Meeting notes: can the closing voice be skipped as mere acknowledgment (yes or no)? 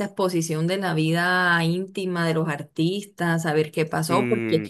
yes